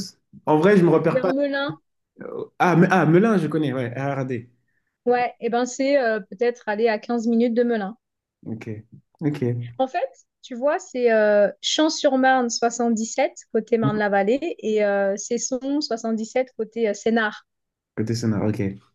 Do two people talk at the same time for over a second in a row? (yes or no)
no